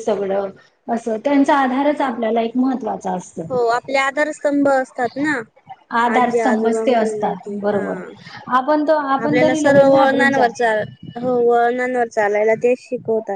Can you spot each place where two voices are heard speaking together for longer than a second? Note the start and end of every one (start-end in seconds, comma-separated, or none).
6.2-7.8, 9.2-10.6